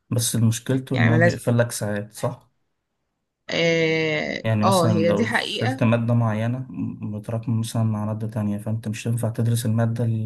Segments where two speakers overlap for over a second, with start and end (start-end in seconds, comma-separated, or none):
4.4-5.8